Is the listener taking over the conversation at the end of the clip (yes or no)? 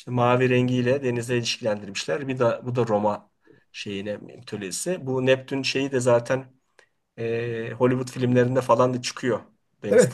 yes